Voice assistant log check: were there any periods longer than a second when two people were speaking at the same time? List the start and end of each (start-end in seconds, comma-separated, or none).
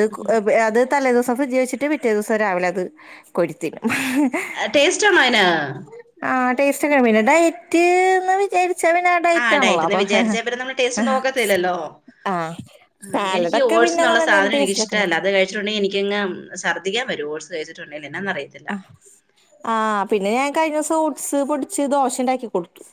9.4-11.1, 13.1-15.0